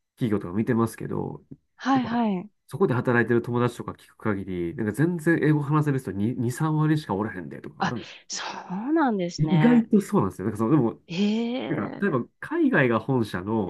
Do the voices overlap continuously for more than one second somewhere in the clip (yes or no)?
no